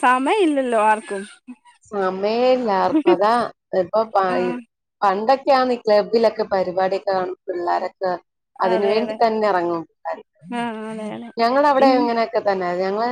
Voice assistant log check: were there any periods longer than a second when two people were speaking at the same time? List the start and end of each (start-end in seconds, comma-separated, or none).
none